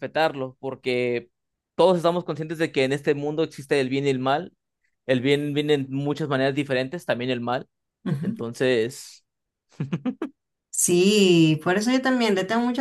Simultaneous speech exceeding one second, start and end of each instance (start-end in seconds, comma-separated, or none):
none